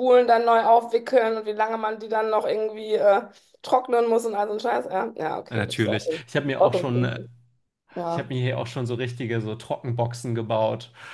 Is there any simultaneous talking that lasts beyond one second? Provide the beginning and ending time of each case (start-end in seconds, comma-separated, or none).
5.5-7.2